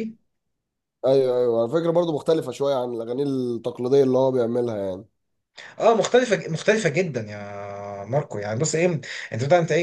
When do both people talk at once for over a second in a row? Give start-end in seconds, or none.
none